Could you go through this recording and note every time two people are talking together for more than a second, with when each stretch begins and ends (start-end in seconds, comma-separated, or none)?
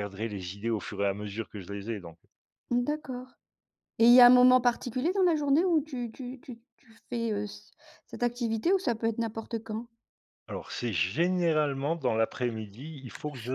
none